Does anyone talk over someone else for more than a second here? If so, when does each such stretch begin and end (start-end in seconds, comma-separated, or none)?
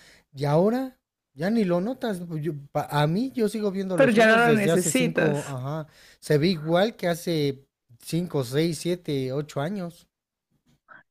3.9-5.6